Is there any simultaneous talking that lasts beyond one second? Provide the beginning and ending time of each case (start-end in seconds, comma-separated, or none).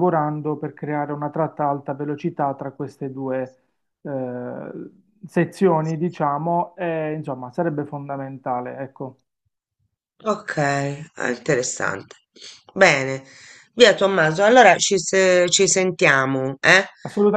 none